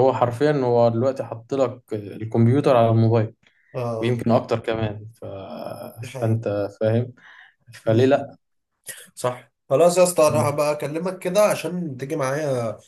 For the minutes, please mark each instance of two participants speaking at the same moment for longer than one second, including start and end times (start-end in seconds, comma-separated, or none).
none